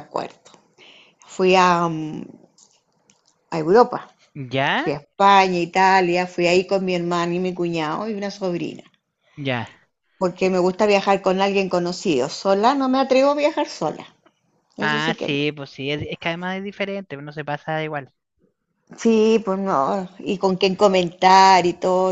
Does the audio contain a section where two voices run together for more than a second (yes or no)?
no